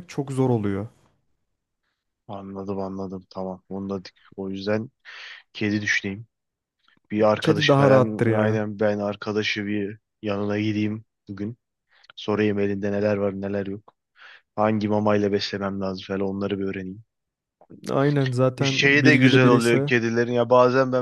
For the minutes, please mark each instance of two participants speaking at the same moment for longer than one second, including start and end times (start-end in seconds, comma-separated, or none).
7.4-8.7, 18.6-19.9